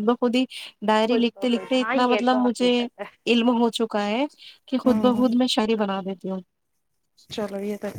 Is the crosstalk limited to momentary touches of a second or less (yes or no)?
no